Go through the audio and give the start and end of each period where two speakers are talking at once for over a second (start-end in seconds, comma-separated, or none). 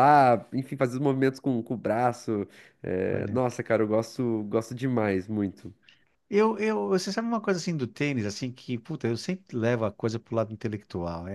none